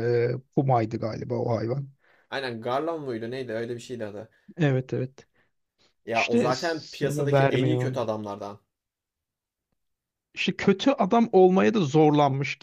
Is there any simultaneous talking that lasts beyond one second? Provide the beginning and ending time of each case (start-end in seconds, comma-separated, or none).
6.1-8.0